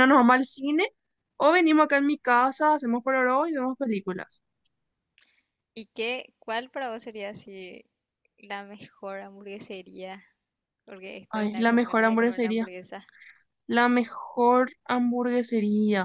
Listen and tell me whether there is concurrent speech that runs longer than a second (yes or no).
yes